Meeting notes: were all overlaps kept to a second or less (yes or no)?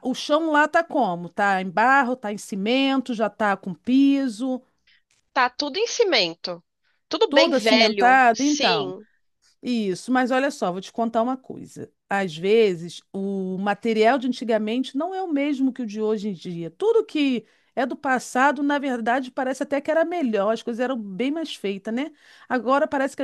no